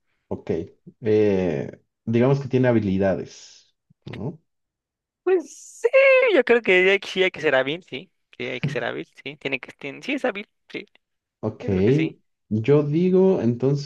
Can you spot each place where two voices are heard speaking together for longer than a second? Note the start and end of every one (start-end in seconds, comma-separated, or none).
none